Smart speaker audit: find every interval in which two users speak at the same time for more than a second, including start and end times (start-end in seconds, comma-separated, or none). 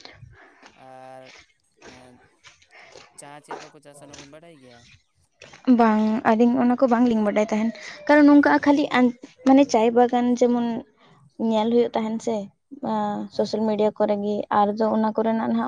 none